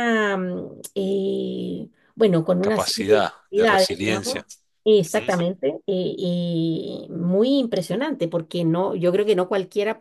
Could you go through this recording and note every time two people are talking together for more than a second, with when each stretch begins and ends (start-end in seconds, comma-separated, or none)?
2.6-4.5